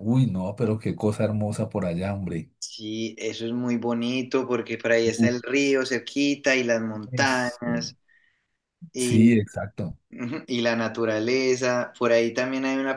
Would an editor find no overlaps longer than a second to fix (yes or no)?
yes